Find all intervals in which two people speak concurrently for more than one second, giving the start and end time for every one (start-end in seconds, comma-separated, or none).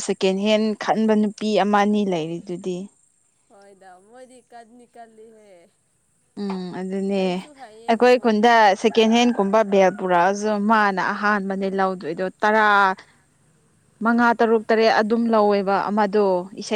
none